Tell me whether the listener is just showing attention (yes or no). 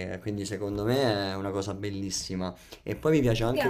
yes